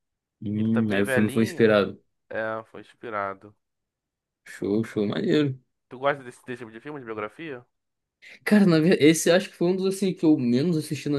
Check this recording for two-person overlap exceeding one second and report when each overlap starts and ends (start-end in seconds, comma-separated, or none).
0.6-1.8